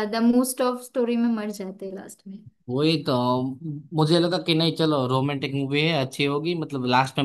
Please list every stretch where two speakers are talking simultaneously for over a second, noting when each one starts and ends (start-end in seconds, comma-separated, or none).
none